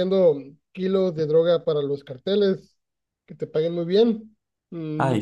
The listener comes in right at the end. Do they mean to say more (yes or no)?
no